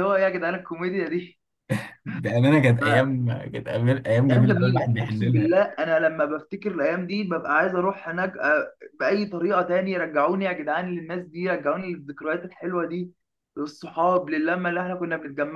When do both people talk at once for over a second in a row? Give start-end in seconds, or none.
4.3-5.5